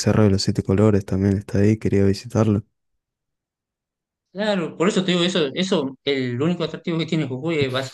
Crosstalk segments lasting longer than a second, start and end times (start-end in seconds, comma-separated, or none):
none